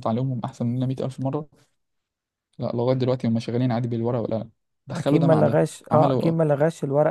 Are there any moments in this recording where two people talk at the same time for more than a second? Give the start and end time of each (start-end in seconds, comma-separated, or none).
4.9-6.3